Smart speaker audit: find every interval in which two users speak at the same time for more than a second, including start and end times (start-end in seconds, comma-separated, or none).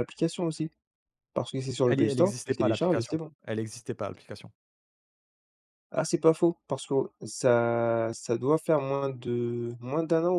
1.9-3.3